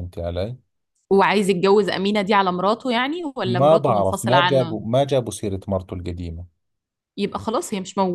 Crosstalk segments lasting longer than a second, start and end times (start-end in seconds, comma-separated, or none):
3.4-4.8